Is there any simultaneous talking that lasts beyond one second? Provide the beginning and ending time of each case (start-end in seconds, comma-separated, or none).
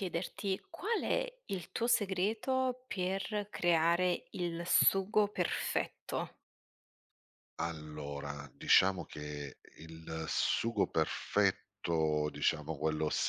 none